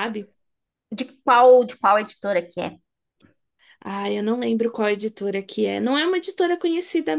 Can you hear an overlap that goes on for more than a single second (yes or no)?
no